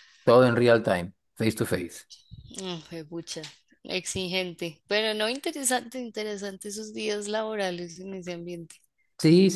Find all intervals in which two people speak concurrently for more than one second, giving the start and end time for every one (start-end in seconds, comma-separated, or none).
none